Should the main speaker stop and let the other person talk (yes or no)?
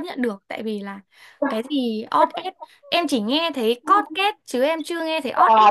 yes